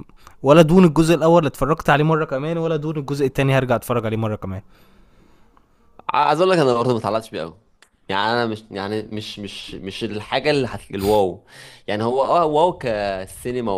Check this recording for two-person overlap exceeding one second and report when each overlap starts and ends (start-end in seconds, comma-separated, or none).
none